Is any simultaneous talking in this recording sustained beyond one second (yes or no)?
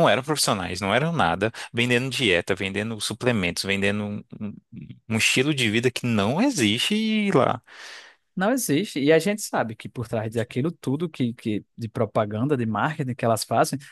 no